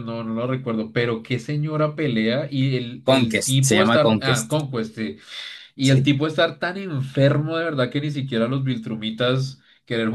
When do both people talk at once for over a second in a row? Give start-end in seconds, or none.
3.1-4.5